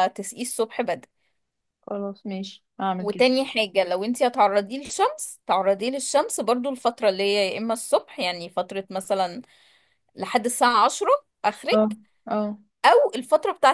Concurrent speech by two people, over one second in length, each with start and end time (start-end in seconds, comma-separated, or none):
none